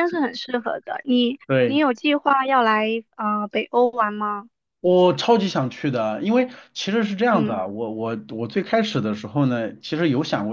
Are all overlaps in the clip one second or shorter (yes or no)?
yes